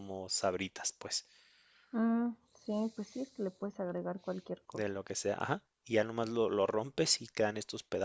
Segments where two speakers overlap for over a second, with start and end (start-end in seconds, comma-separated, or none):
none